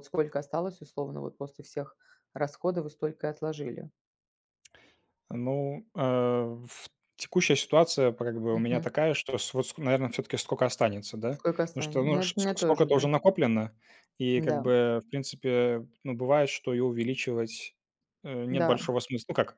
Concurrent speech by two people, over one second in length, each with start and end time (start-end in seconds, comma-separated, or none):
11.3-13.1